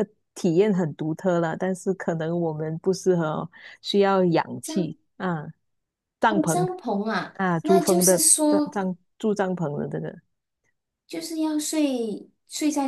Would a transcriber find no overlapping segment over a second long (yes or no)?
no